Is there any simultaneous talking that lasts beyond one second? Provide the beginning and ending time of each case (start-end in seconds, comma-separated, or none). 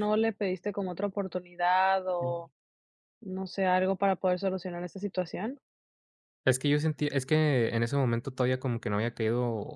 none